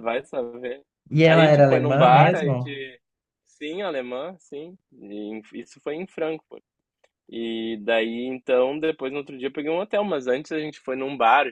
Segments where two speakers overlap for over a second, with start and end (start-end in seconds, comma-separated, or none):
1.3-2.8